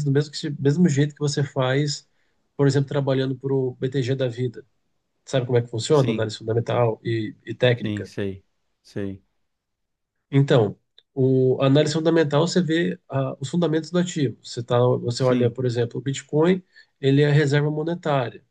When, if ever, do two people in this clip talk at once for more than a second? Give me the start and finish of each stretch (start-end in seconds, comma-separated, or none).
none